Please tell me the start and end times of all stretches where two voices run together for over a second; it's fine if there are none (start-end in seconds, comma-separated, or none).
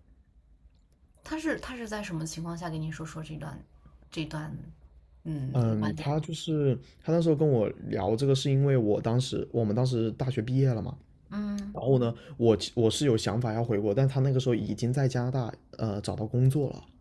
none